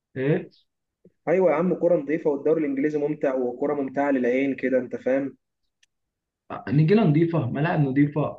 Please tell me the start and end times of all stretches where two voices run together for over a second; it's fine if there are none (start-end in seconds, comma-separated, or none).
none